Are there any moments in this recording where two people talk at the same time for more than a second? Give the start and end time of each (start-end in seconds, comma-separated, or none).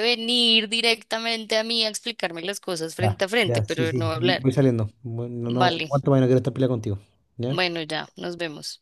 3.0-4.5